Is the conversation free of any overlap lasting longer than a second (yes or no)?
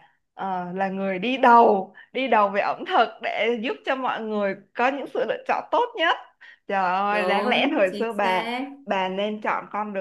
no